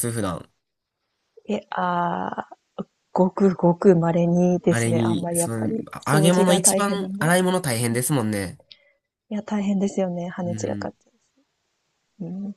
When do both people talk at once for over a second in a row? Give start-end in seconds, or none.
4.7-7.3